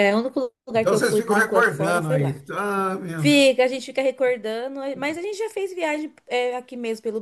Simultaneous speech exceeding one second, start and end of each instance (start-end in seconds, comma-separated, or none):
0.8-2.4